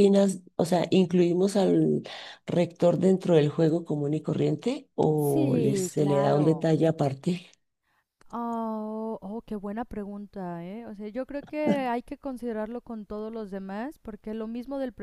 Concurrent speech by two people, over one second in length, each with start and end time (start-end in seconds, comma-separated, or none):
5.2-6.7